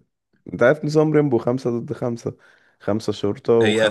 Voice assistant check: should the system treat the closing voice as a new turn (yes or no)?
yes